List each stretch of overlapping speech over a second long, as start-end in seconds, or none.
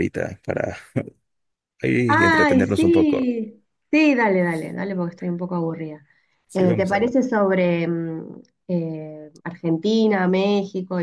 2.1-3.3